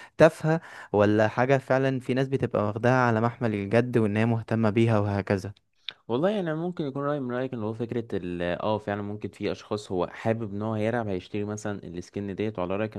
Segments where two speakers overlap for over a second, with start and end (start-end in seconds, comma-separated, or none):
none